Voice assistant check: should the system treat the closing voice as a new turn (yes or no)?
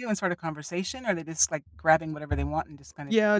yes